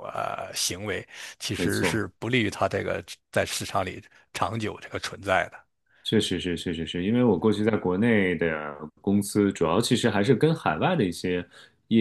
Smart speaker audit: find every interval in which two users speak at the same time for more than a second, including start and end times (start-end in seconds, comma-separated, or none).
none